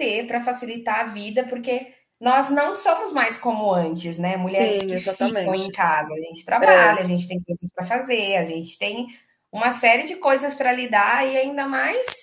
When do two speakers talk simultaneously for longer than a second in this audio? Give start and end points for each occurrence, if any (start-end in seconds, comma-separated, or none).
4.4-5.7